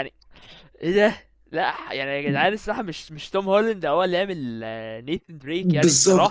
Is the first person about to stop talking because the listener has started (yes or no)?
yes